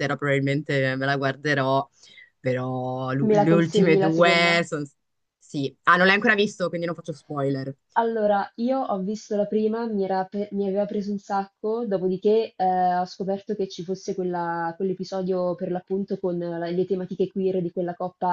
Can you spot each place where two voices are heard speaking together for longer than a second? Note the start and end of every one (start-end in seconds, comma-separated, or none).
3.2-4.6